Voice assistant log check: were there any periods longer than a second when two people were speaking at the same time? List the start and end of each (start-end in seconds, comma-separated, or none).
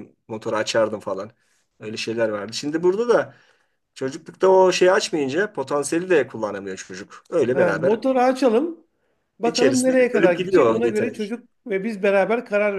9.4-11.3